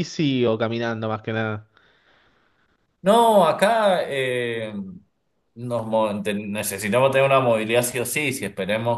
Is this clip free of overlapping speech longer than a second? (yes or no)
yes